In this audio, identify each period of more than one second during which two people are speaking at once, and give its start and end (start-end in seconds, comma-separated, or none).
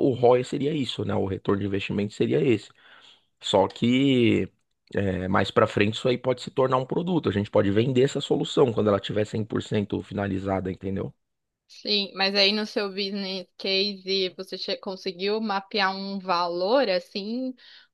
none